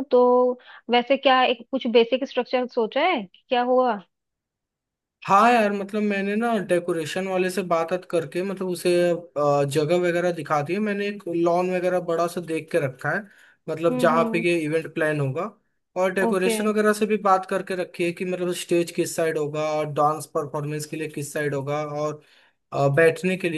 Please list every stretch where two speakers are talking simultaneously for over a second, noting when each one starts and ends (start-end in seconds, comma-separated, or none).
none